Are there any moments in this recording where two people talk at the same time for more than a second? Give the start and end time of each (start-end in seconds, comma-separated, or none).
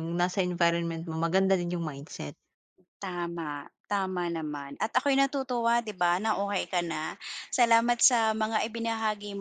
none